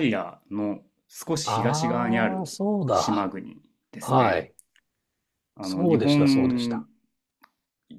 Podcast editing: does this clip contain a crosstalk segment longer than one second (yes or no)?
yes